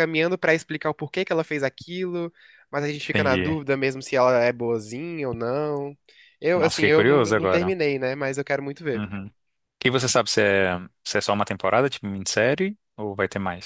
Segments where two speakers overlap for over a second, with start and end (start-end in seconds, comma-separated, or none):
6.5-7.7